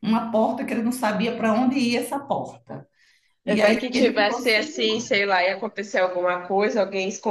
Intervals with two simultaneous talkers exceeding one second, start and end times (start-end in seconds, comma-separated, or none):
3.6-5.2